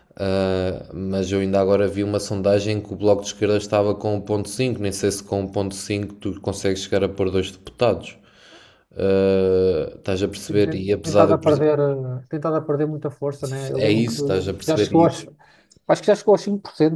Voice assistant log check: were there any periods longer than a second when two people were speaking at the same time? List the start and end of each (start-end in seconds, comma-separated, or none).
10.5-11.7, 13.7-15.1